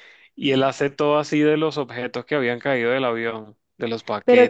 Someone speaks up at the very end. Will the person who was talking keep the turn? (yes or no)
no